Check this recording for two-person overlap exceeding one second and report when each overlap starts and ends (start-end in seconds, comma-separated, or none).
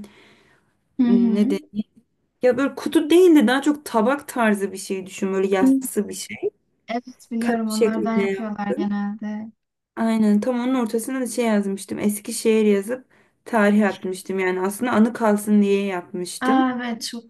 7.4-8.9